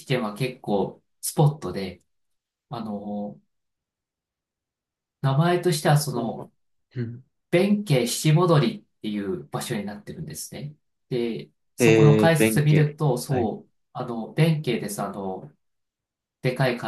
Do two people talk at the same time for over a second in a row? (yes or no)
yes